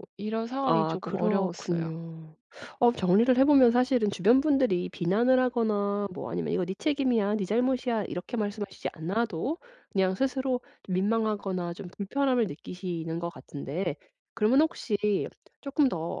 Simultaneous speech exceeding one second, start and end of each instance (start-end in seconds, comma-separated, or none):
0.6-1.9